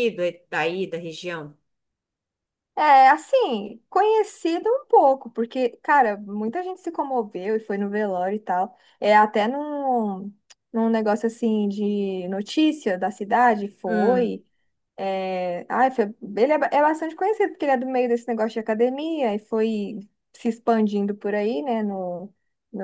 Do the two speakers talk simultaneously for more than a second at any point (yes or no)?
no